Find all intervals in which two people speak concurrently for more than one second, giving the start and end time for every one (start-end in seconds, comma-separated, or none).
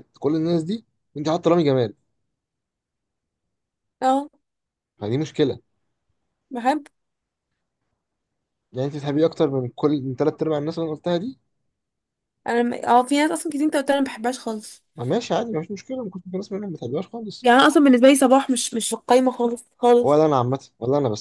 none